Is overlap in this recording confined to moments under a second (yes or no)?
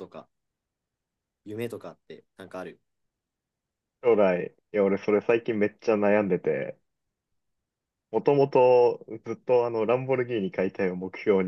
yes